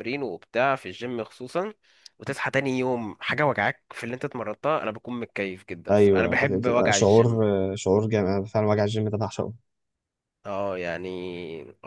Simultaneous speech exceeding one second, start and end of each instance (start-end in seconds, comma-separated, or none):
5.9-7.4